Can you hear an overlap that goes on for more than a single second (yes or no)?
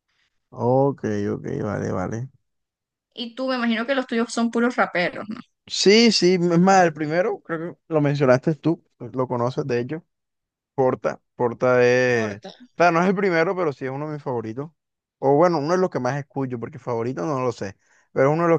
no